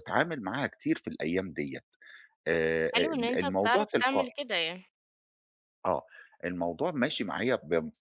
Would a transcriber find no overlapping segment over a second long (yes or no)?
no